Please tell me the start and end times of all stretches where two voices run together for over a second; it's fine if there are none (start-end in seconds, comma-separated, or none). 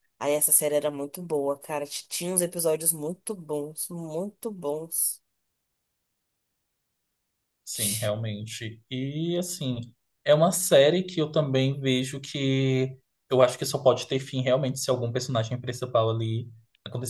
none